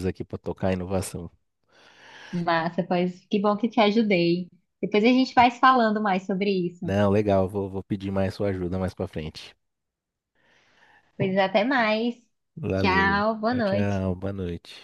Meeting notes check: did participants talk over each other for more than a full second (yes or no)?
yes